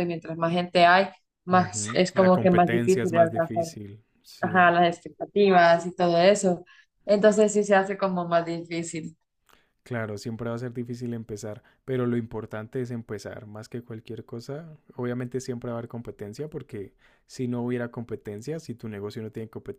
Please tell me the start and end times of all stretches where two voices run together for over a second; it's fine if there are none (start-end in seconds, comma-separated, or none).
1.5-3.6